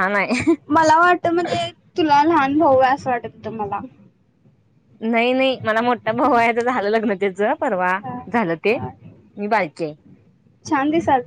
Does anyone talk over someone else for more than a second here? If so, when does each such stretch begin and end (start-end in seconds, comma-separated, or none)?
none